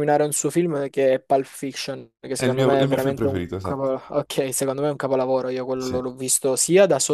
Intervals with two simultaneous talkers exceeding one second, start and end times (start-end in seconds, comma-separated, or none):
2.4-4.0